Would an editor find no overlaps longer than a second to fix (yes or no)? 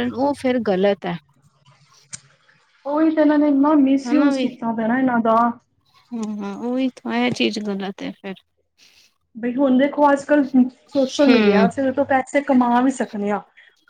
yes